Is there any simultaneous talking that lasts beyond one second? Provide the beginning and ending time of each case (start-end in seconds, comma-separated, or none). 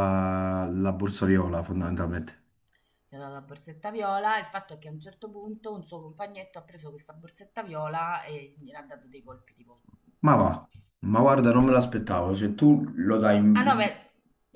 none